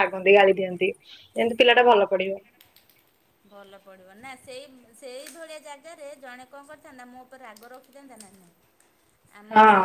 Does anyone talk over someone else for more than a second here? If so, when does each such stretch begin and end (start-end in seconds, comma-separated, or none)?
none